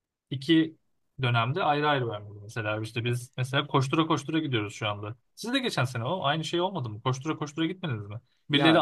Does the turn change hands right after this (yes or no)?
no